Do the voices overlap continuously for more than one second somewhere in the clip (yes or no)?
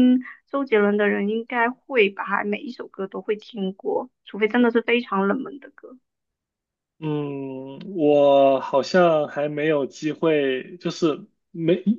no